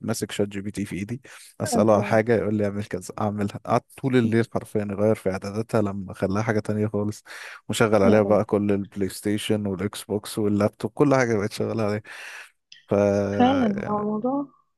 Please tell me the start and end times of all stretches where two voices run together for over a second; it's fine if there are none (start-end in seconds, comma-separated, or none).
none